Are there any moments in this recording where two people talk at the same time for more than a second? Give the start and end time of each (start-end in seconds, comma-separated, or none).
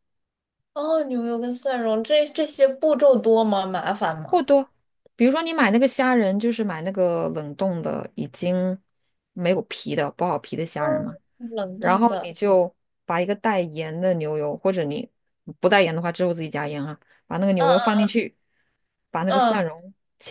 none